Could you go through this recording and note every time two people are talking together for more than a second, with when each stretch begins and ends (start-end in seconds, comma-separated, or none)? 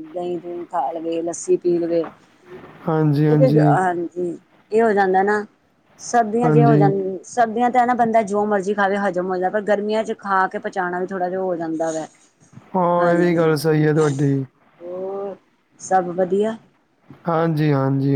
none